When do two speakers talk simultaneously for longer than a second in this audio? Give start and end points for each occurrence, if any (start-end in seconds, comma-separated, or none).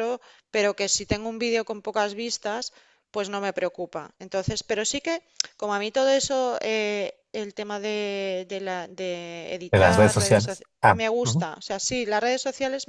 9.7-11.5